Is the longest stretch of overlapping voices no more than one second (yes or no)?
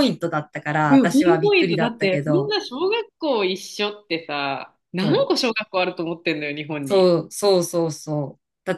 no